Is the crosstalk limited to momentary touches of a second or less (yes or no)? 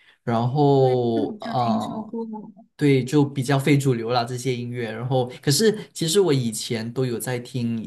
no